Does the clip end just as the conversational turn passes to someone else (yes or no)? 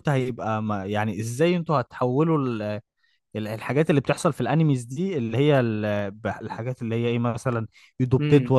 no